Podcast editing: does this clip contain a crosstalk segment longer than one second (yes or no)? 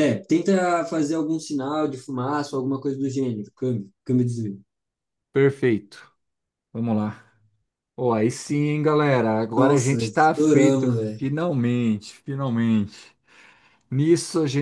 yes